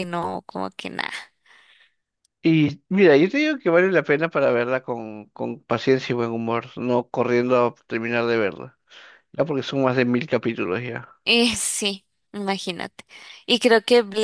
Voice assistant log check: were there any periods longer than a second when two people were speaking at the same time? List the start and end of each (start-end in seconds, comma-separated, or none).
none